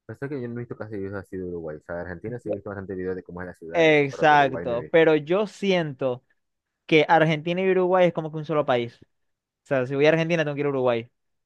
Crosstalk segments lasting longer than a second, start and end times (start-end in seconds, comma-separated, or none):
3.7-5.1